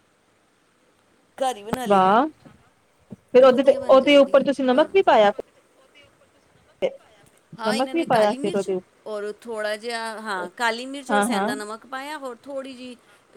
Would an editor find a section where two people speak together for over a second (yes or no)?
yes